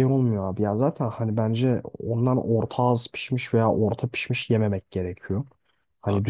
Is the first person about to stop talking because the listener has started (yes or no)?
no